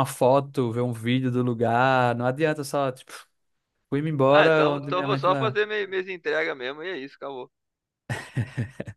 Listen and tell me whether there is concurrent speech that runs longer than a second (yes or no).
yes